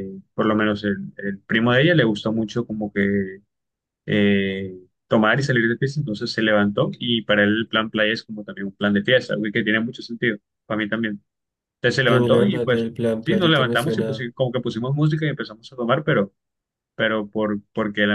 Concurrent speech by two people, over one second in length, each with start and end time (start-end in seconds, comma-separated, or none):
12.1-14.3